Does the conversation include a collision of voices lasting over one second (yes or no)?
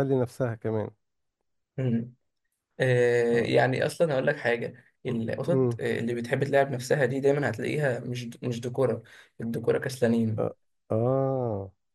no